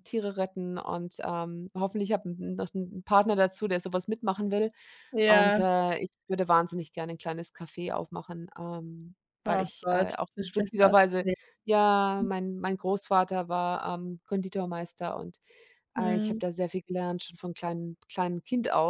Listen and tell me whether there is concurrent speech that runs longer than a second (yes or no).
yes